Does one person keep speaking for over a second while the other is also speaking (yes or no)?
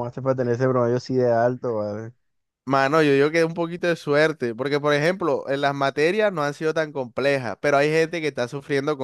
no